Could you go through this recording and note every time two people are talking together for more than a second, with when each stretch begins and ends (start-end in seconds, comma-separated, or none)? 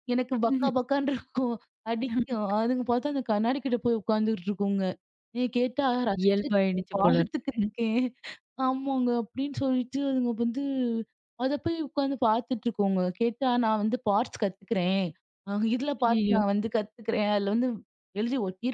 6.2-7.6